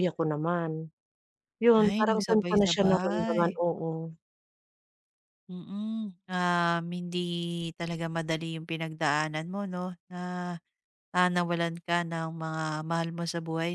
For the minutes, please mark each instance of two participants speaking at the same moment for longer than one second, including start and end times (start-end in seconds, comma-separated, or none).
1.9-3.4